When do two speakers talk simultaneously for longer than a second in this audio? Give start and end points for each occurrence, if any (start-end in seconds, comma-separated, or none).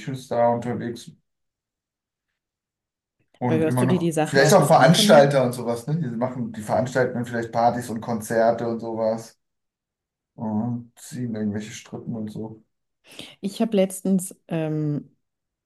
3.4-5.5